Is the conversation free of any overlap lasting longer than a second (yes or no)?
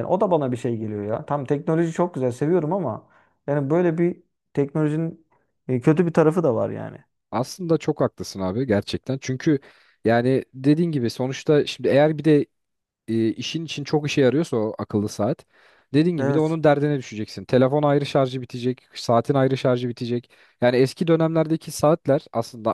yes